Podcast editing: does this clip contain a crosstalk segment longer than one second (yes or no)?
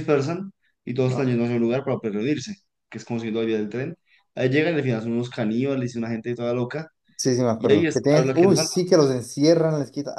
yes